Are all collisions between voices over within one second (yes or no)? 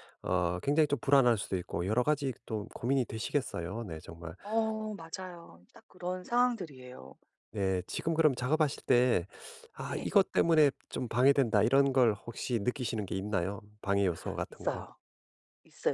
yes